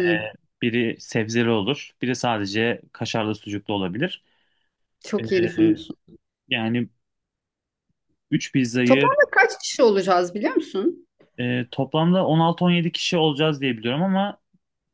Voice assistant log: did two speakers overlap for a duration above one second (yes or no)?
no